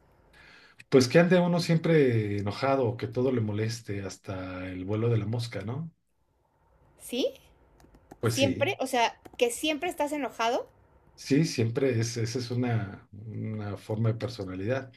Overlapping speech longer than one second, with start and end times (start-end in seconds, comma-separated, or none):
none